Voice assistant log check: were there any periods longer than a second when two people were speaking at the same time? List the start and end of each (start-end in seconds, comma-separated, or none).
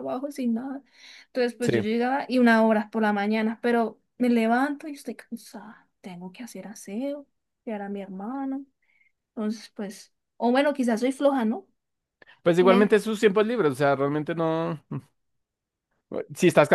none